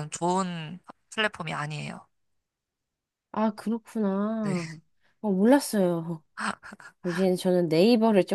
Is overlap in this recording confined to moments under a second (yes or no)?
yes